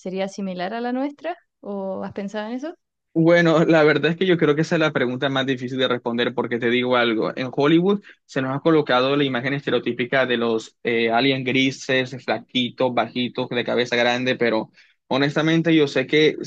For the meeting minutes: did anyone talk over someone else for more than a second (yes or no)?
no